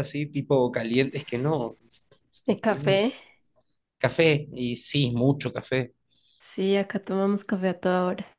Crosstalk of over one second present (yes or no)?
no